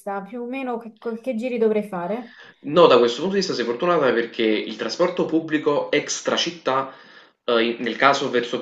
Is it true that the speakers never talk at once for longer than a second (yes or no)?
yes